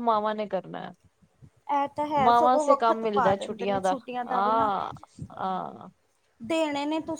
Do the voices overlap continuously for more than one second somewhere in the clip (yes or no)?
yes